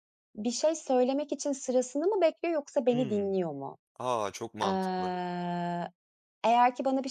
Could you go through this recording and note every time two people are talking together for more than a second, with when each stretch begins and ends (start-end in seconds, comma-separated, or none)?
none